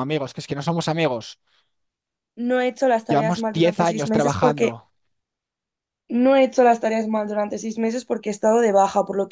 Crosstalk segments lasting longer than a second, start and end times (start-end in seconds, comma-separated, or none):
3.1-4.7